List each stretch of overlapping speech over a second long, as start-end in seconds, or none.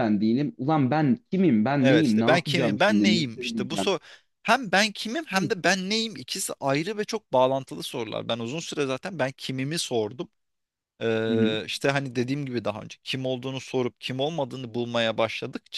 1.8-3.9